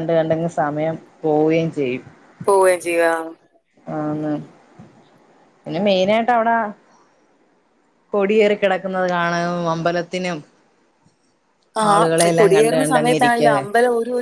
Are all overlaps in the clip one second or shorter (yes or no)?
no